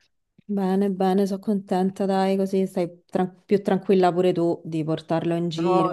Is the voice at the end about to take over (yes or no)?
yes